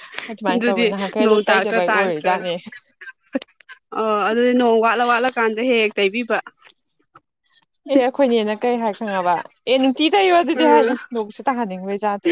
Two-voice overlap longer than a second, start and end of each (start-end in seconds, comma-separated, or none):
0.5-2.3